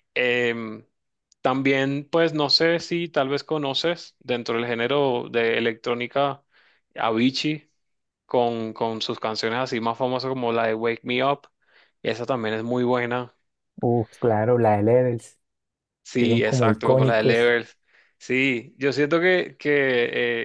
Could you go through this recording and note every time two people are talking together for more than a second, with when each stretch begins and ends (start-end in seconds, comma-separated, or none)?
16.2-17.5